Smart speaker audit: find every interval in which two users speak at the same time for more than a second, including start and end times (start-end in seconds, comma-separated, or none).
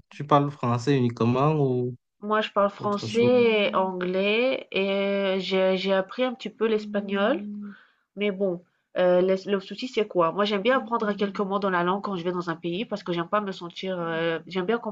none